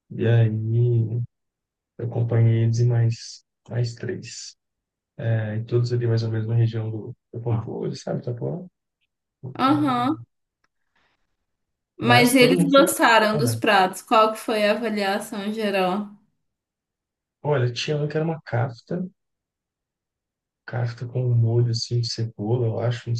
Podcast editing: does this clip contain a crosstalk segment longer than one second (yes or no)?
yes